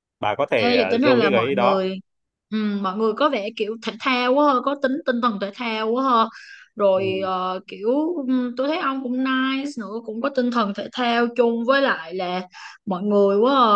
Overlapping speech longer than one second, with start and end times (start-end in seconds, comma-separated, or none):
0.6-1.9